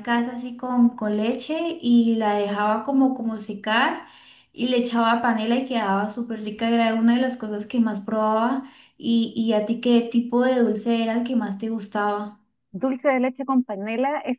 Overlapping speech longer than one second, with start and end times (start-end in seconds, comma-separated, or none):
none